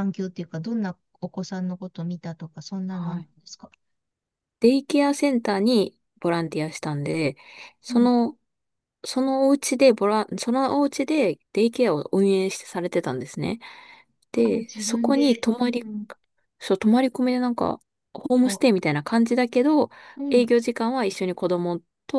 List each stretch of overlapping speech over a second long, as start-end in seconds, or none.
14.4-15.8